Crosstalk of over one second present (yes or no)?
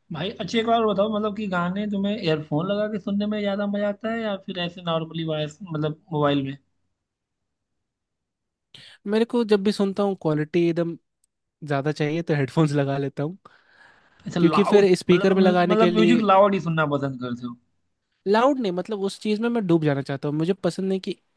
yes